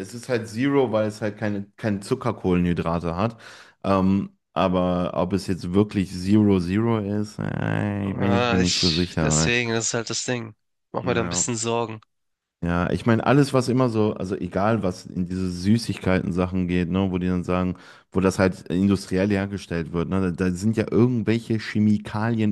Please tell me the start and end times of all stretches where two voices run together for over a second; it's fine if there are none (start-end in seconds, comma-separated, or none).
8.0-9.5